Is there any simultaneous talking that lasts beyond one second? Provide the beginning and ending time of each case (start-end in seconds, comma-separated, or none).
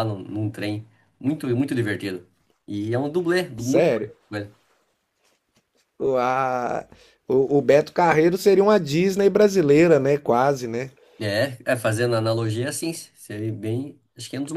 none